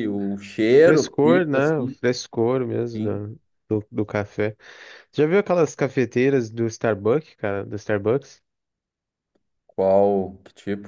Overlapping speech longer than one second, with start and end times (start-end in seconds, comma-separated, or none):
0.7-2.0